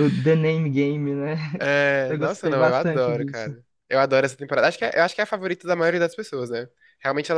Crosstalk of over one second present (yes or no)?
yes